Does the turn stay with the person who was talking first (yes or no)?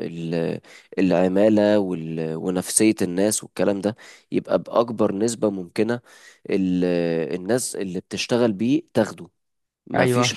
yes